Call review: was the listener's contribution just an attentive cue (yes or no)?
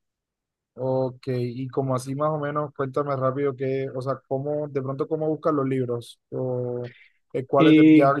yes